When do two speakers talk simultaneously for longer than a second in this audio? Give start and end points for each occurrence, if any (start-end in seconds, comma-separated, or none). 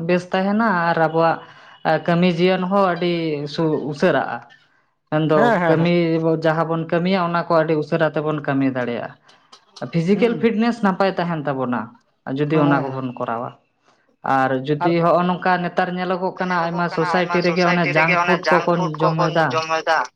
16.5-18.4